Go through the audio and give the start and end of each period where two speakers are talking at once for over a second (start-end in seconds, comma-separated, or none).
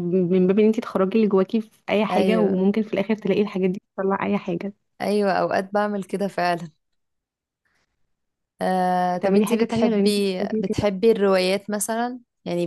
9.1-10.9